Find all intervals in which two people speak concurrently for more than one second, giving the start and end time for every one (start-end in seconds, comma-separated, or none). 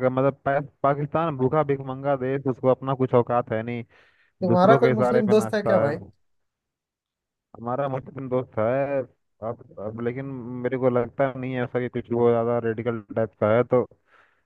4.5-5.9